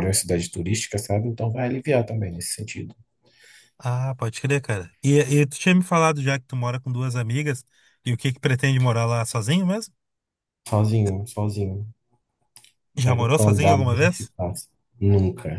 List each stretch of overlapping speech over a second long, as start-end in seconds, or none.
13.0-14.3